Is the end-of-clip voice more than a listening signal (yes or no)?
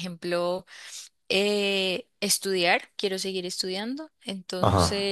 no